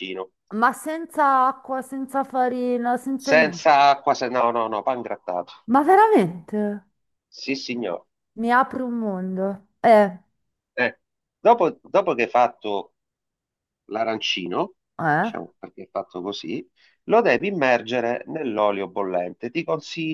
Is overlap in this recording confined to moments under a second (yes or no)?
yes